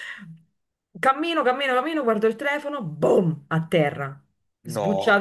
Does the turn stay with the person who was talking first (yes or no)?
yes